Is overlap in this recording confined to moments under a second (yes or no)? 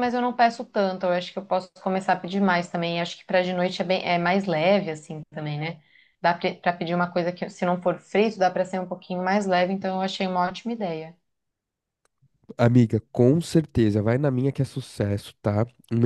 yes